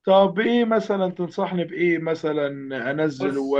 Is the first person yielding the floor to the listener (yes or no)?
no